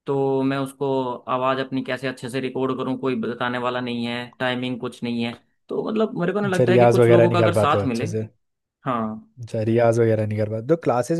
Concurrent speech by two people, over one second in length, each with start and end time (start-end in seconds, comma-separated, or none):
6.6-8.1